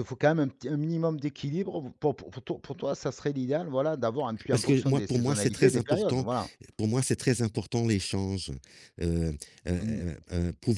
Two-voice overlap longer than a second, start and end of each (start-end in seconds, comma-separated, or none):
4.5-6.2